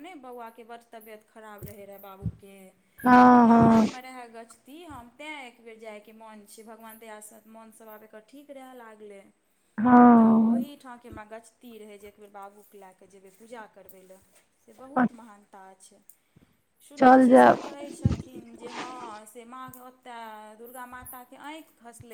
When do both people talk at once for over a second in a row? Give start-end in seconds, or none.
none